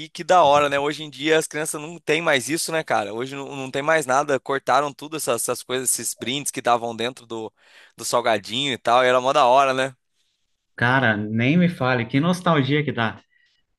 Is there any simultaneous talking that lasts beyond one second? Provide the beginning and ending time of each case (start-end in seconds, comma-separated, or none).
none